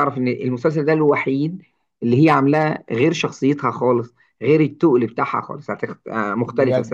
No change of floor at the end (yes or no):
no